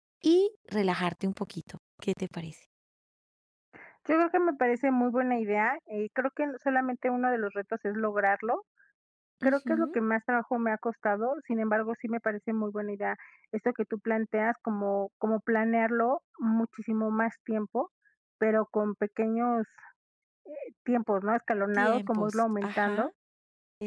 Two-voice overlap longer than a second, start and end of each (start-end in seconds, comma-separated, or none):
21.7-23.1